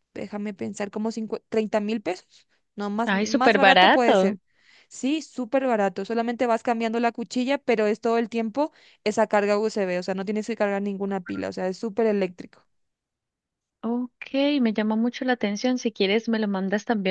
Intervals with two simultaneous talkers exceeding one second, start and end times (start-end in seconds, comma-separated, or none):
3.0-4.4